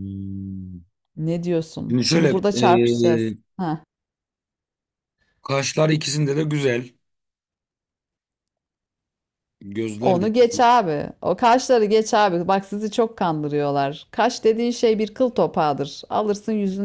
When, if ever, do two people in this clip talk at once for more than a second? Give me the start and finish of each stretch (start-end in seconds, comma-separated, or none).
1.9-3.3